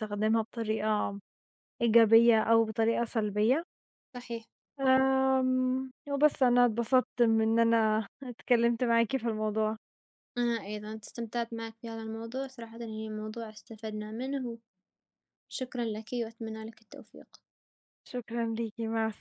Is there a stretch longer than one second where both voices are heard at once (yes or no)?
no